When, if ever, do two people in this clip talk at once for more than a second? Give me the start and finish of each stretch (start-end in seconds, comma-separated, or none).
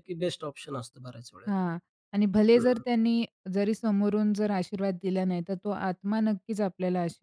none